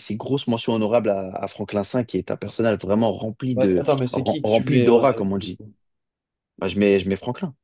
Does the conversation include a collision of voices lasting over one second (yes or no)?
yes